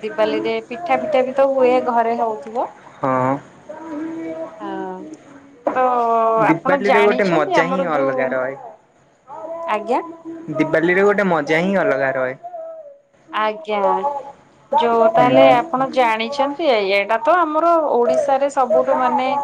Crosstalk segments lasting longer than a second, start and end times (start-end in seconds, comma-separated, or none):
6.5-8.2